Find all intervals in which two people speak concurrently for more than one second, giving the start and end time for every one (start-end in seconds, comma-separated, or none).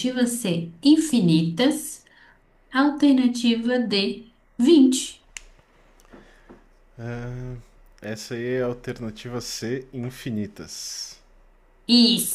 none